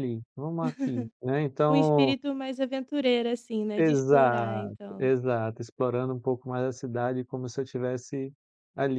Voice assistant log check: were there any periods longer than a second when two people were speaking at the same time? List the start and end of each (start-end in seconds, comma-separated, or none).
3.8-5.1